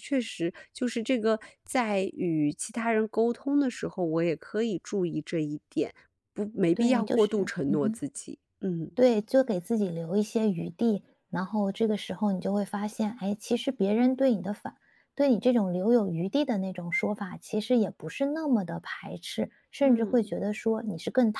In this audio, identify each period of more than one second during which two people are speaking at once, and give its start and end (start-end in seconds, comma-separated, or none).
6.7-8.0